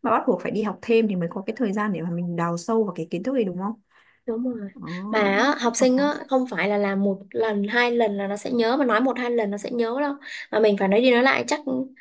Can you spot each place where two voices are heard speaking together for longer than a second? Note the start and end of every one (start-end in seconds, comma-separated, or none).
none